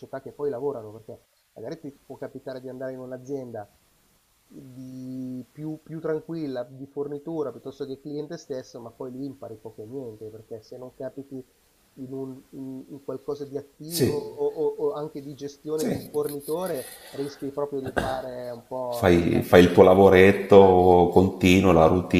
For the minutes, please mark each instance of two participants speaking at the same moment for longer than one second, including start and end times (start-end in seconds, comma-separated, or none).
18.9-20.8